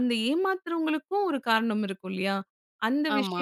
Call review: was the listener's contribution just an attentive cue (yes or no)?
yes